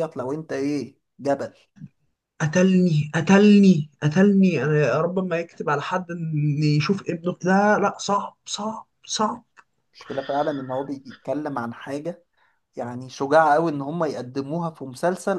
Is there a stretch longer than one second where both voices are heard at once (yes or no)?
no